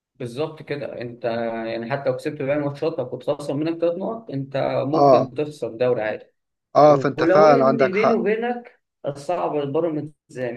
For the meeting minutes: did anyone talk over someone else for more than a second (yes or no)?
yes